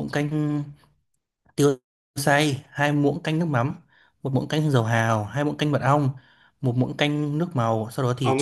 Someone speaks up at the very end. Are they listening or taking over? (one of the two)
taking over